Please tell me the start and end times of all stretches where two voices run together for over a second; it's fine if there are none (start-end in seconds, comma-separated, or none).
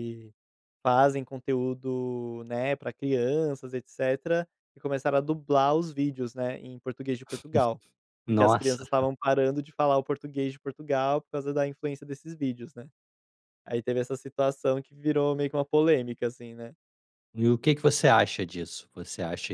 none